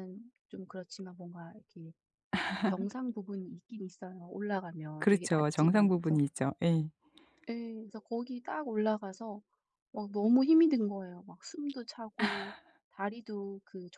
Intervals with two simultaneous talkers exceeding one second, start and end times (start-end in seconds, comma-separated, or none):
5.0-6.2